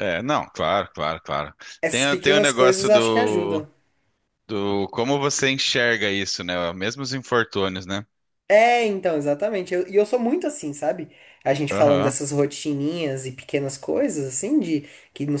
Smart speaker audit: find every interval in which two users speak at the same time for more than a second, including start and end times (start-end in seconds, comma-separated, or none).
1.9-3.6